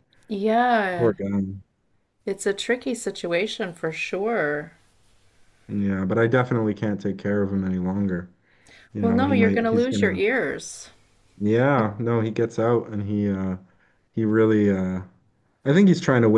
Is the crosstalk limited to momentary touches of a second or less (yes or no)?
no